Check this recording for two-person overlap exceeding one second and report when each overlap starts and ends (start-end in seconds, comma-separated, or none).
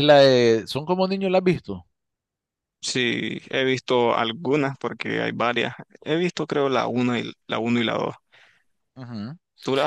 none